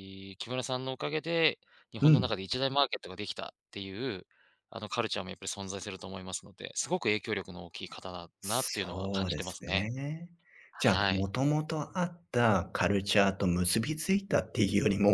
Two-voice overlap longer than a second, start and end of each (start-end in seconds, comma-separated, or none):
8.4-9.9